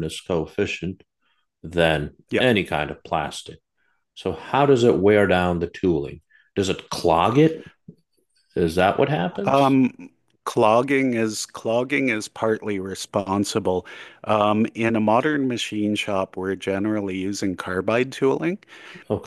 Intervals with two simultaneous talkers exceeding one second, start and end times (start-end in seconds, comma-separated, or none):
none